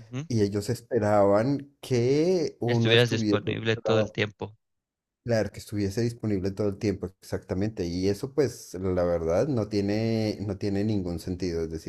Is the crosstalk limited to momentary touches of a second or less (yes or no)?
no